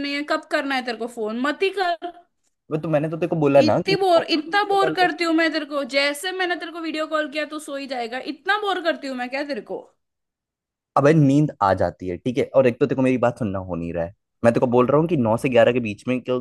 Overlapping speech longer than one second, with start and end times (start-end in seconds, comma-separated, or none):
3.6-5.1